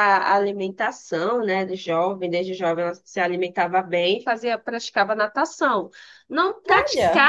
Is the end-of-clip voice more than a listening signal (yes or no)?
no